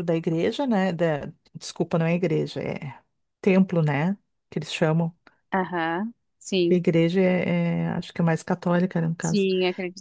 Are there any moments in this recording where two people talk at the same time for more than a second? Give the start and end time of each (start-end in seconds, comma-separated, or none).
none